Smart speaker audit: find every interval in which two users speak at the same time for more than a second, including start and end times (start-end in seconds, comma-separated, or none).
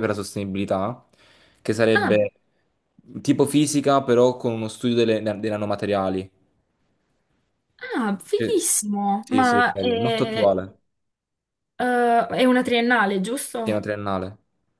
9.2-10.6